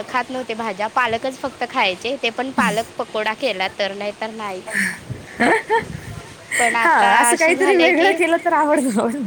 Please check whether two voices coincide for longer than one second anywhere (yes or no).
yes